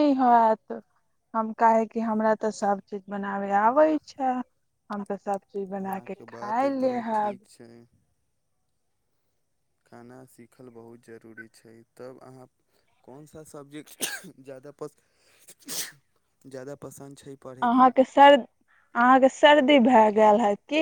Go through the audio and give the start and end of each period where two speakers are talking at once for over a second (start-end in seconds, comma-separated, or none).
5.8-7.4